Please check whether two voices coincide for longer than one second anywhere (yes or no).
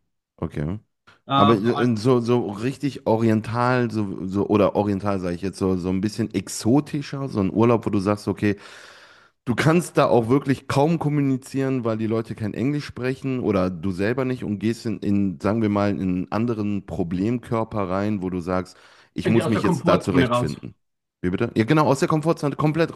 yes